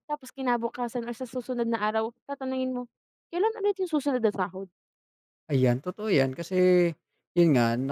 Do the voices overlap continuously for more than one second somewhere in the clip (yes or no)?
no